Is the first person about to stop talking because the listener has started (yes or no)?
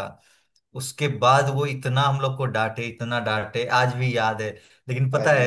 no